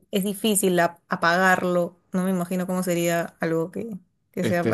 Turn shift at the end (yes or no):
yes